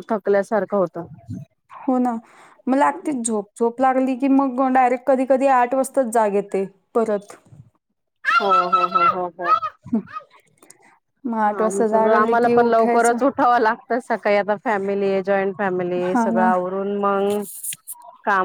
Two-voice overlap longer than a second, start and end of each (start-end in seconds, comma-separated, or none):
11.6-13.2